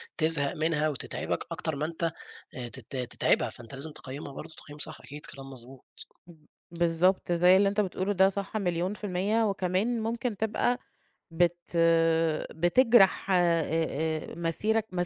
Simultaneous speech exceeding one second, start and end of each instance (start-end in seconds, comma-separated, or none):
none